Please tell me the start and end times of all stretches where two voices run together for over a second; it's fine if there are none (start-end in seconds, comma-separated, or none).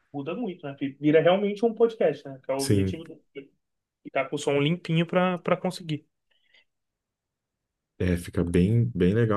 none